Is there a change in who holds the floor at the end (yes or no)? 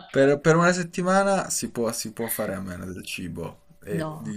no